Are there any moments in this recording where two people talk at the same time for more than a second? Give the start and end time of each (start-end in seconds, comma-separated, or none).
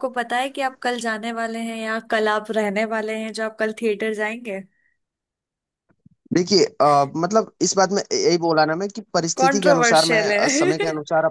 9.4-10.7